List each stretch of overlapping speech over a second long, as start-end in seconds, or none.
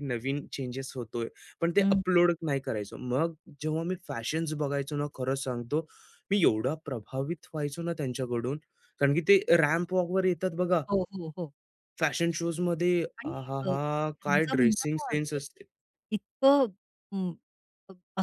13.2-15.4